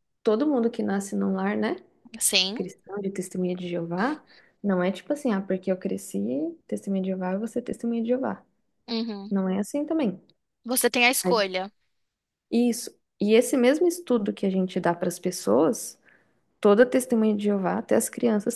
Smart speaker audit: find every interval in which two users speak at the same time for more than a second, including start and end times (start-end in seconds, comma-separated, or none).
none